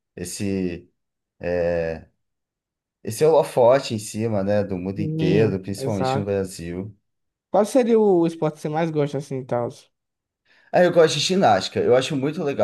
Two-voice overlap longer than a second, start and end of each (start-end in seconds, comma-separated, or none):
5.0-6.3